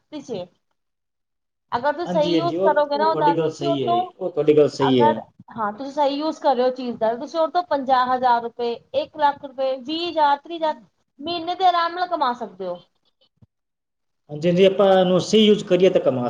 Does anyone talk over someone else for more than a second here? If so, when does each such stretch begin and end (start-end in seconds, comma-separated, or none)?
2.1-4.0